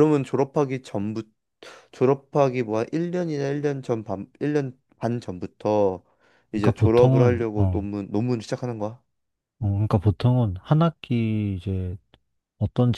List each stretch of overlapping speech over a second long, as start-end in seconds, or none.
6.5-7.8